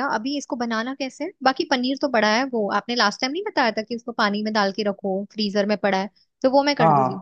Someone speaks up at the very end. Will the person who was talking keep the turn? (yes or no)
no